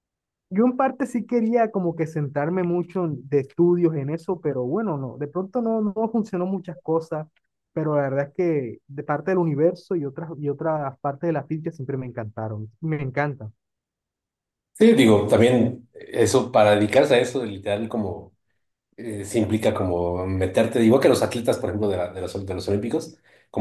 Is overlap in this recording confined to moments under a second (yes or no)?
yes